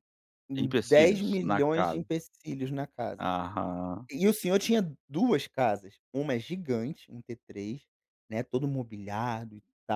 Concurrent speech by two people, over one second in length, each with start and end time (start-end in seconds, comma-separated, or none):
0.6-2.0